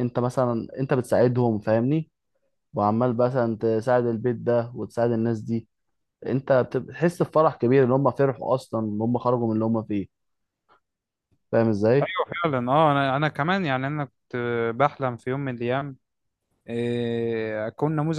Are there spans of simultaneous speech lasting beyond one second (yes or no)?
no